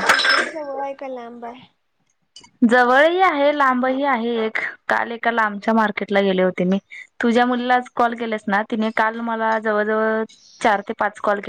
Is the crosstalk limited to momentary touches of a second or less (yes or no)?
yes